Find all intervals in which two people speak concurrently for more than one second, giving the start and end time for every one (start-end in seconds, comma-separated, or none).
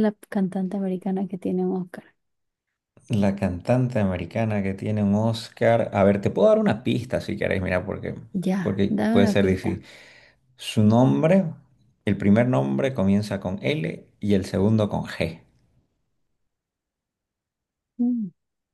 8.6-9.8